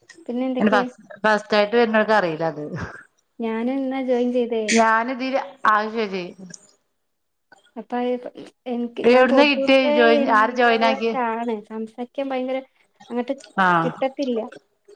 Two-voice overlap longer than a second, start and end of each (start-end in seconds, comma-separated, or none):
9.1-11.1